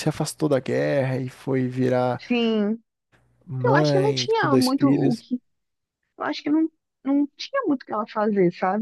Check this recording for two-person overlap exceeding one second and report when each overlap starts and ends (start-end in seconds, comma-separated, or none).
3.6-5.2